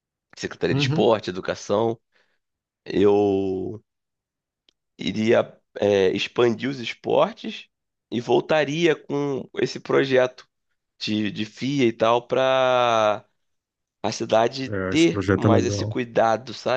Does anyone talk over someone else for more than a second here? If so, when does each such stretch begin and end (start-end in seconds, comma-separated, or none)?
14.7-15.9